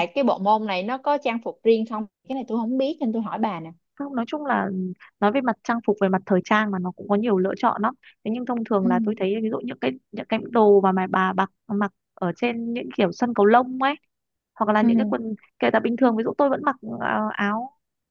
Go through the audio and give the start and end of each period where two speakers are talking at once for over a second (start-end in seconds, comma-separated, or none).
none